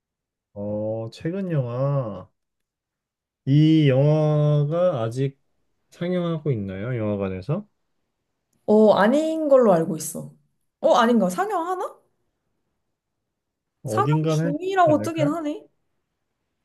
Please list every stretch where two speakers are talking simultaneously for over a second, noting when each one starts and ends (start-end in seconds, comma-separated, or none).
13.9-15.4